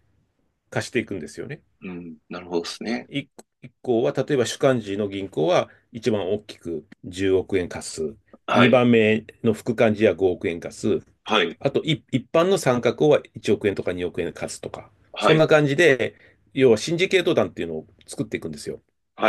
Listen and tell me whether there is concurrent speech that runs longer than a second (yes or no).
no